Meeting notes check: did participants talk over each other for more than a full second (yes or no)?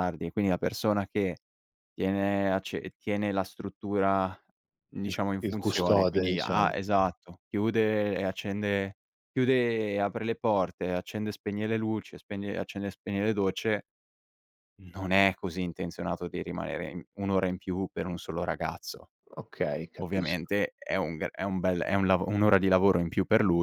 yes